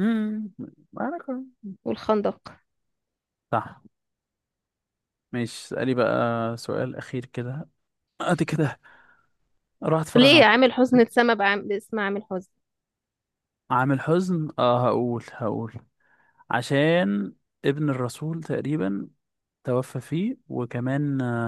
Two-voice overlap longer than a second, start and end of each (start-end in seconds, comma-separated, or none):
none